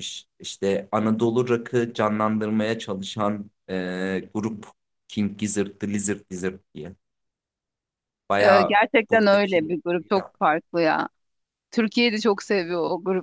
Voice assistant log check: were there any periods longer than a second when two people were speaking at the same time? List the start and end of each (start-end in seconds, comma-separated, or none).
8.4-9.7